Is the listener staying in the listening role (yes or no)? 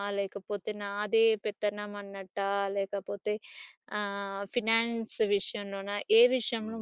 no